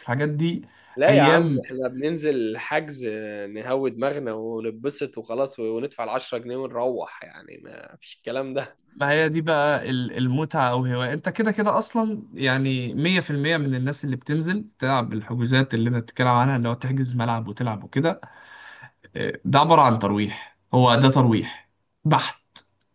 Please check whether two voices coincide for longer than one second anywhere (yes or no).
no